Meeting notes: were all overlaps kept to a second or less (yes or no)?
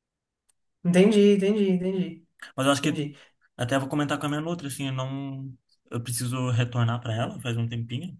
yes